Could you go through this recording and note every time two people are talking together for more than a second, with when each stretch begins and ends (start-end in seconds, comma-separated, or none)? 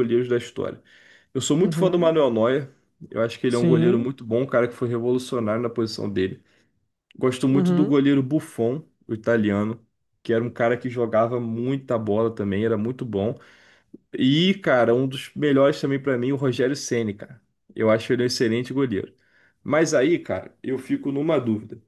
none